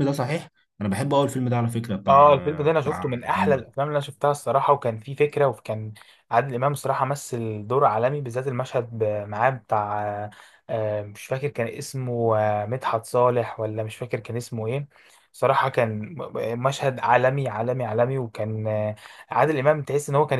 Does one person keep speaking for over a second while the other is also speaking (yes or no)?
yes